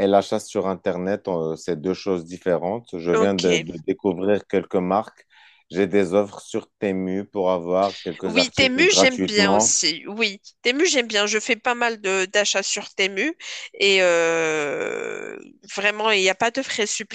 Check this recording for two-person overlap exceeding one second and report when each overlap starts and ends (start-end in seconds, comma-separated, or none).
8.2-9.8